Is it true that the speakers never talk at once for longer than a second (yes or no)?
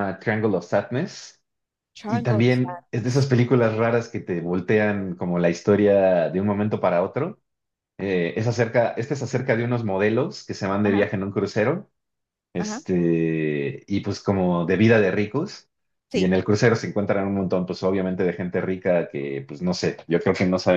no